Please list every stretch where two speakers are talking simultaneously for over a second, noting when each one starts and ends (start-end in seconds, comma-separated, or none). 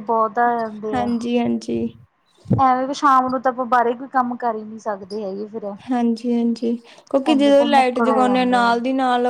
7.3-8.6